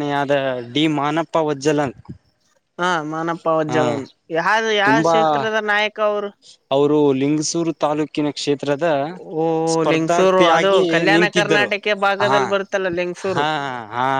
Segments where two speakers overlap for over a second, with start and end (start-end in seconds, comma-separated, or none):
9.9-11.7